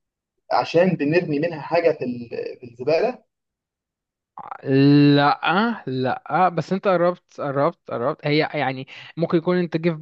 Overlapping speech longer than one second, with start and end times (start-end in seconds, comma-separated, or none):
none